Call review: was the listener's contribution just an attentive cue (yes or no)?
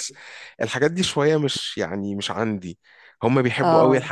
yes